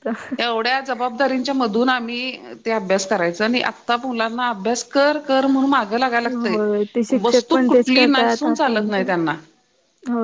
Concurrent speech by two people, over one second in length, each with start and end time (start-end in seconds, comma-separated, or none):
7.2-9.1